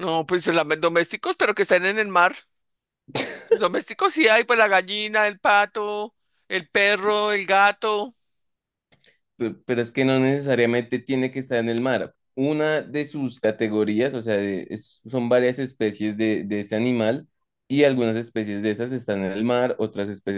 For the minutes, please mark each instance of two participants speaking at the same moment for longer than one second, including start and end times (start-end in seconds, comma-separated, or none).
none